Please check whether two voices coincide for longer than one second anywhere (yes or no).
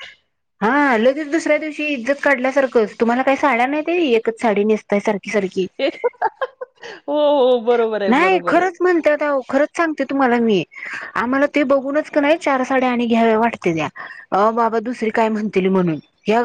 no